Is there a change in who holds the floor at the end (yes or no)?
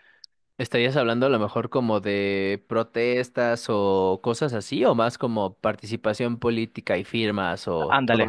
yes